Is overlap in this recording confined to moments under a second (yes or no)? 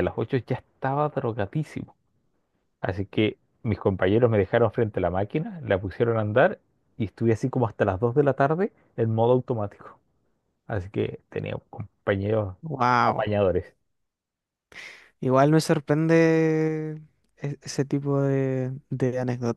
yes